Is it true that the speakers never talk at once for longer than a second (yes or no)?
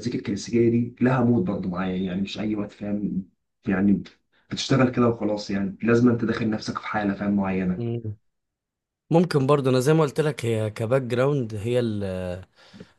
yes